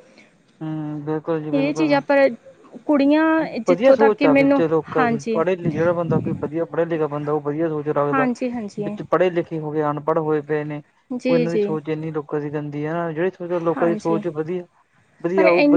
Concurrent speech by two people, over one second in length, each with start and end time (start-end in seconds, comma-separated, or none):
3.7-5.4